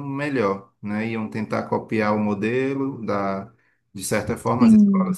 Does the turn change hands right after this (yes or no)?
no